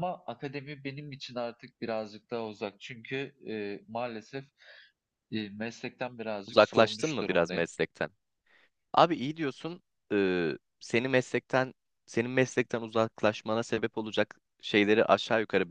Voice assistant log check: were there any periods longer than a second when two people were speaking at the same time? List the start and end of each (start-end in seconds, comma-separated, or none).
6.5-7.7